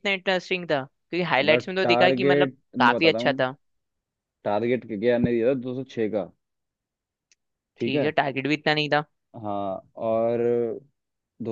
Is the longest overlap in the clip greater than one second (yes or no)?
yes